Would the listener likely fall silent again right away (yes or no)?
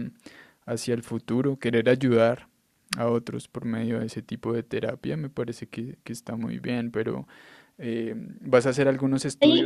yes